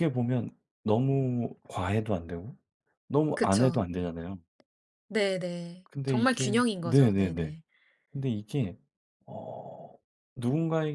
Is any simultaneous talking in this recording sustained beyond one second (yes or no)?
yes